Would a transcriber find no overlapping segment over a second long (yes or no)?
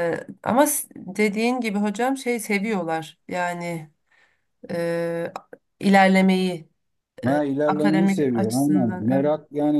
no